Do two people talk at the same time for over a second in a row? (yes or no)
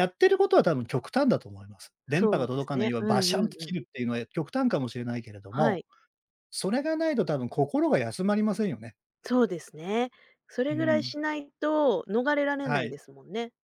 yes